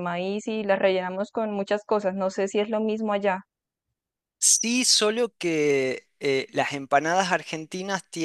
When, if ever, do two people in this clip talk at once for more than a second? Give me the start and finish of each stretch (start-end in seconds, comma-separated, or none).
none